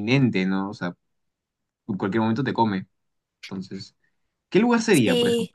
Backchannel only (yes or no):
no